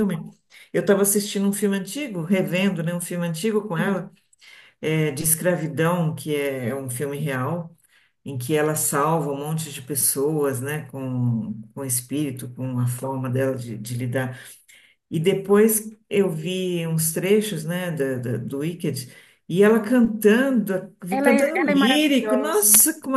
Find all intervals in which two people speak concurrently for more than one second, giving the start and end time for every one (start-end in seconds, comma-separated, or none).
21.1-22.7